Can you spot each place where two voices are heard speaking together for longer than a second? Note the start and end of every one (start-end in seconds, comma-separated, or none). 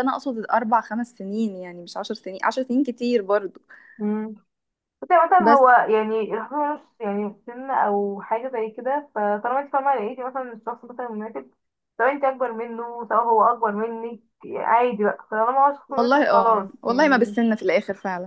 15.9-17.4